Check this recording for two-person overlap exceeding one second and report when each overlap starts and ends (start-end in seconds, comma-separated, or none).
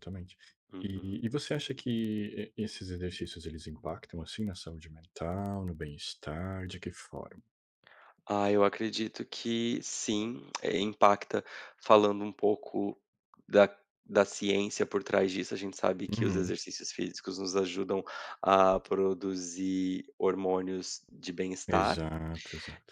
none